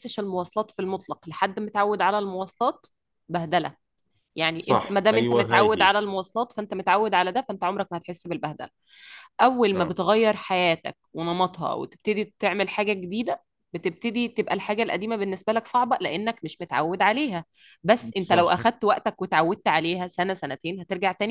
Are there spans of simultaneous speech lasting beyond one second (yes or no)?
yes